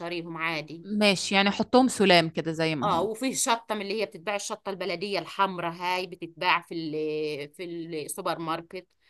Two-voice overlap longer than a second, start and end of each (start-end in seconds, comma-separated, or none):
none